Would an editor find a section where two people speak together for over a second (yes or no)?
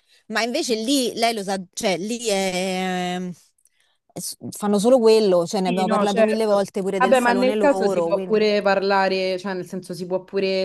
yes